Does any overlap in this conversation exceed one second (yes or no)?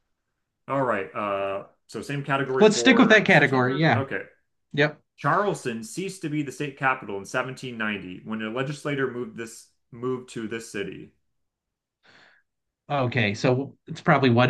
yes